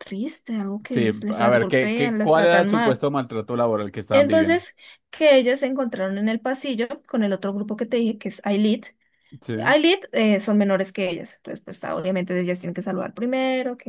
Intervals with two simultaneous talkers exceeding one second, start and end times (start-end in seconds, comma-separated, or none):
0.9-3.0